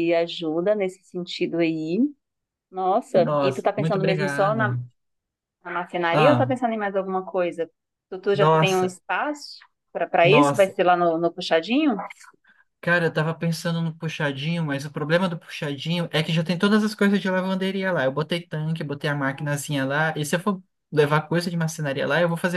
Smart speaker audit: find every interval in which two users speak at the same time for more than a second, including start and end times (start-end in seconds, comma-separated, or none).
3.1-4.8